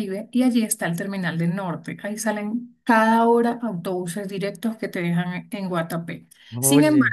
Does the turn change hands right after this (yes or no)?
no